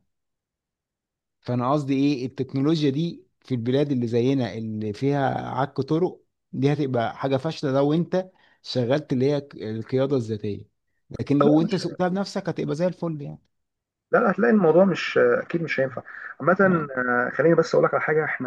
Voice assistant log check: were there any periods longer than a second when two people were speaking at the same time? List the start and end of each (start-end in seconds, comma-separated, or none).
none